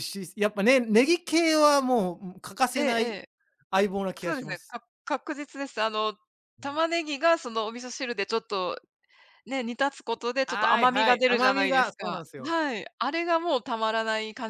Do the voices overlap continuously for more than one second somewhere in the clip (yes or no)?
yes